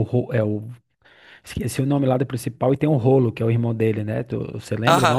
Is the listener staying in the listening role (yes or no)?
no